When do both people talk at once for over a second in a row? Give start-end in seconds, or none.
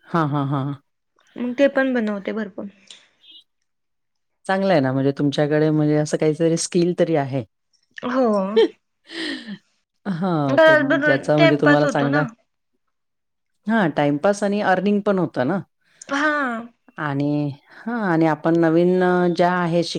10.7-12.2